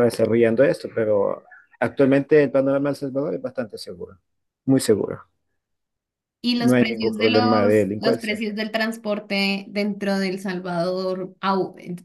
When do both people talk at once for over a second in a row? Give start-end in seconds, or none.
6.6-8.4